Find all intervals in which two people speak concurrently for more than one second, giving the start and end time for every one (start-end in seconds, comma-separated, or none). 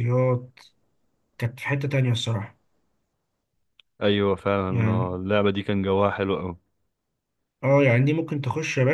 none